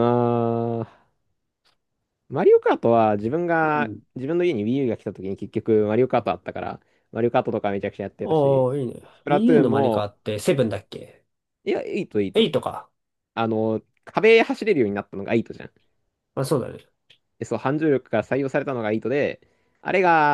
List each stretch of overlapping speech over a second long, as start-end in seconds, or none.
8.2-10.1